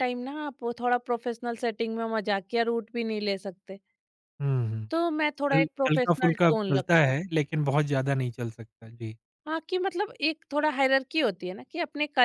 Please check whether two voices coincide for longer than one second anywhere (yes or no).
yes